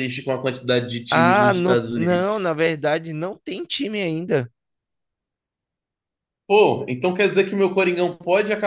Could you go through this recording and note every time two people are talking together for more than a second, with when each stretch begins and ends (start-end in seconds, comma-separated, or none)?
1.1-2.5